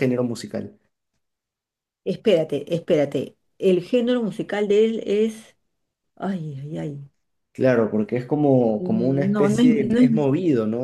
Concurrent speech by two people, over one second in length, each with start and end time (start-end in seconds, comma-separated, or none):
8.8-10.3